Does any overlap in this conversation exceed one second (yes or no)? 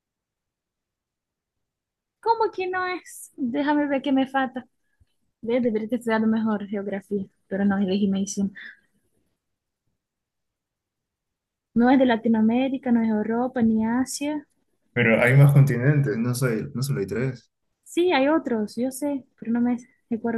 no